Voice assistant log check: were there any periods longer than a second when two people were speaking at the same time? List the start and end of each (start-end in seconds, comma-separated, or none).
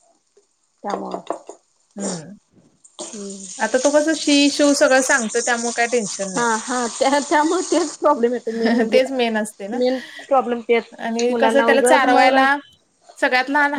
11.3-12.6